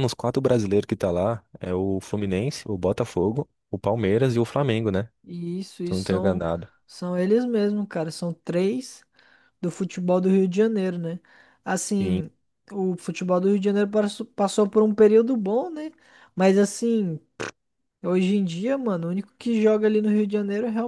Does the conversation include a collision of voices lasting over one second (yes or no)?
no